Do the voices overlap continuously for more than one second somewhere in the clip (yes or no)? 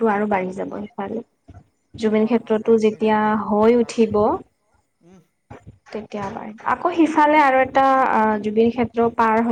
yes